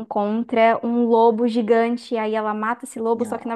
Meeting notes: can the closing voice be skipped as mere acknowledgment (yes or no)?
yes